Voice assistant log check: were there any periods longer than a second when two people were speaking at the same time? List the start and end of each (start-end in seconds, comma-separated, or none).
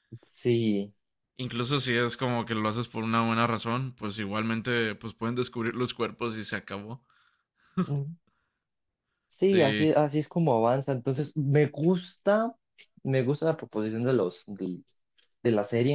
none